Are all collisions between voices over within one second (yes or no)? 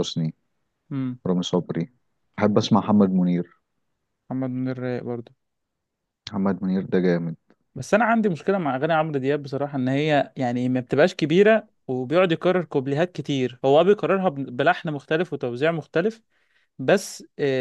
yes